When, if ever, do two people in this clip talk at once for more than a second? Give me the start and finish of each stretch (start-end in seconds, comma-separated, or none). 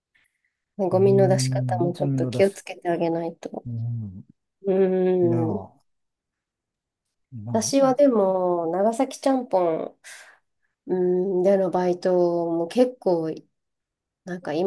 0.9-2.6